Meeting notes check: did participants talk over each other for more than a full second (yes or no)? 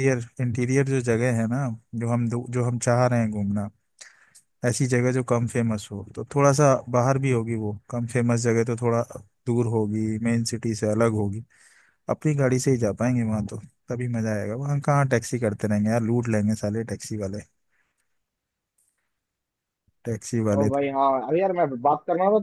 no